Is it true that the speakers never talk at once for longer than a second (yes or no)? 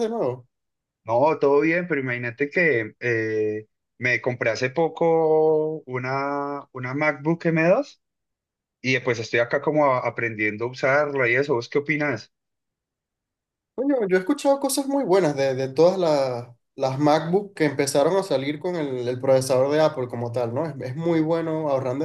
yes